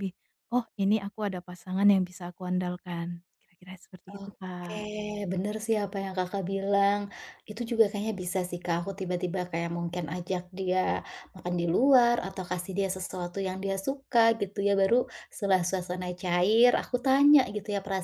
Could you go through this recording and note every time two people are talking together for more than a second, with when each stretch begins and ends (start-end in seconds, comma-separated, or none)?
none